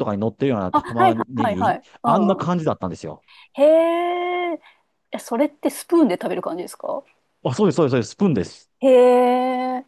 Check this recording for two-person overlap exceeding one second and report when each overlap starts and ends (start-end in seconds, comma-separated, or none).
0.7-2.5